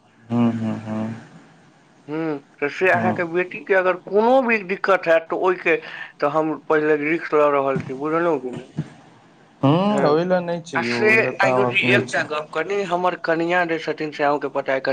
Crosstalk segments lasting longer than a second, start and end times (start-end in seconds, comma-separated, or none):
9.9-12.2